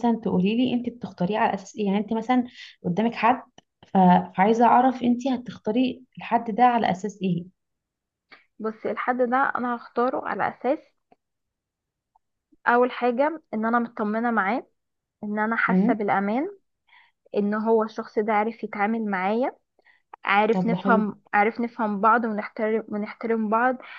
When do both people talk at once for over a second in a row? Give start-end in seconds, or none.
none